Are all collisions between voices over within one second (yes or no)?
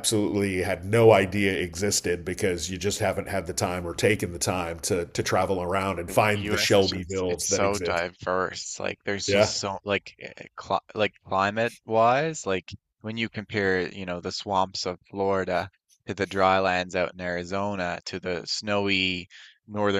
no